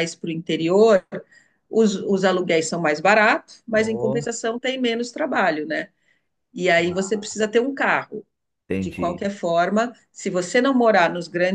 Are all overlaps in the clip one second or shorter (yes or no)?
yes